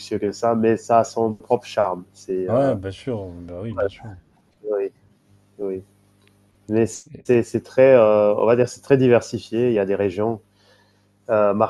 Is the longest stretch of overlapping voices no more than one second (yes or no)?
yes